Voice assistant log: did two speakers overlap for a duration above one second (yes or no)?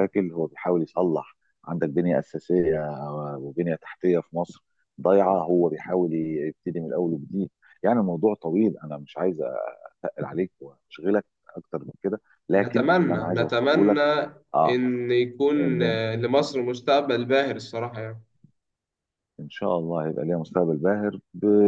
yes